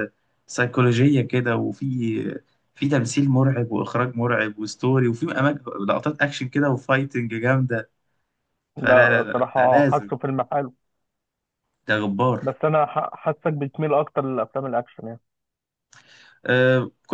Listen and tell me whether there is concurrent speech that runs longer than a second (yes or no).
yes